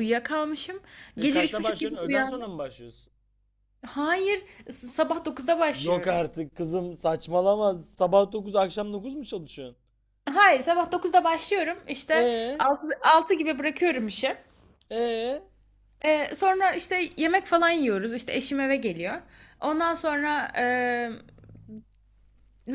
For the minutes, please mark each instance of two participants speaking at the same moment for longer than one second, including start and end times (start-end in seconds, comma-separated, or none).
1.2-2.5